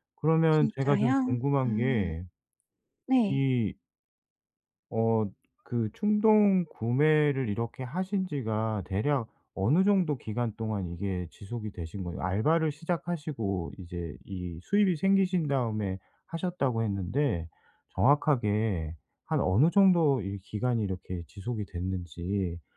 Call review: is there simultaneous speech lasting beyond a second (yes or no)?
yes